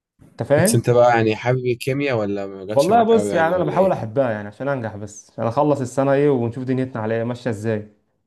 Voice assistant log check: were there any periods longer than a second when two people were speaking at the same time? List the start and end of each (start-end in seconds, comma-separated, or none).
2.7-4.1